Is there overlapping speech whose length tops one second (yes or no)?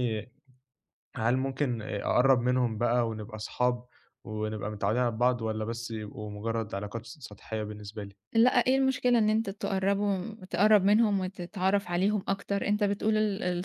no